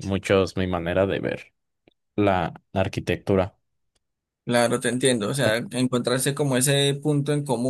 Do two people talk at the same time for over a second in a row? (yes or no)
no